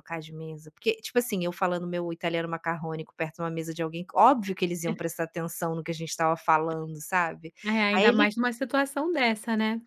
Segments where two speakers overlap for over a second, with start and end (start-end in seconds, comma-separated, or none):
none